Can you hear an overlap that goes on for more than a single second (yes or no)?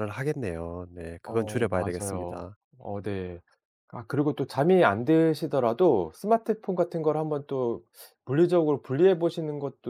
yes